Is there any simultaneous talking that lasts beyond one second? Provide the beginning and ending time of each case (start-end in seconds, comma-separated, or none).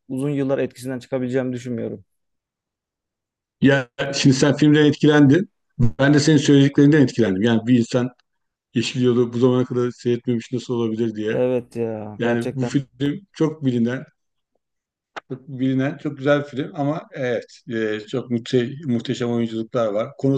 none